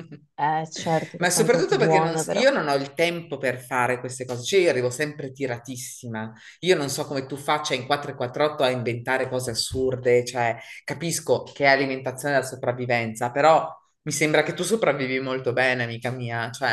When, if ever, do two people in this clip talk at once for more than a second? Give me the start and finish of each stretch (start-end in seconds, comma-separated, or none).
1.2-2.5